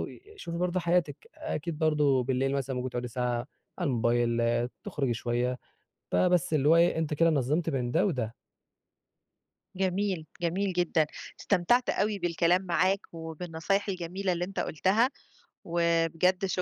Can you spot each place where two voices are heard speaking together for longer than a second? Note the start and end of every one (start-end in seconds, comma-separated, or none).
none